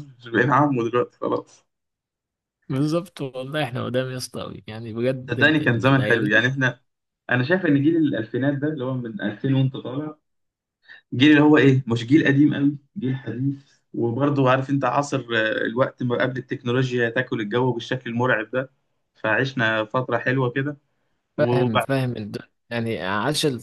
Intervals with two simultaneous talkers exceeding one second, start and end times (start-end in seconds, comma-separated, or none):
5.3-6.5